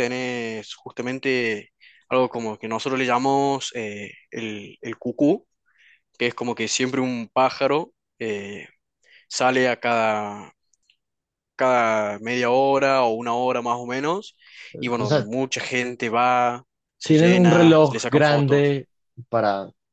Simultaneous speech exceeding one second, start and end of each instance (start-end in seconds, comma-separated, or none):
17.0-18.8